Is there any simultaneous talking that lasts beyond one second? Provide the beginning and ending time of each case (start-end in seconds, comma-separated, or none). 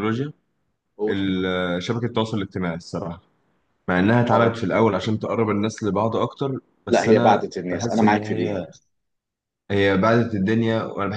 6.9-8.6